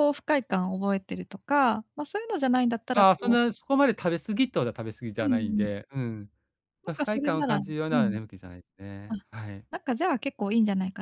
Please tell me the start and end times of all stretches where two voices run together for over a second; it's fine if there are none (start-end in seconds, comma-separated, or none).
6.8-8.2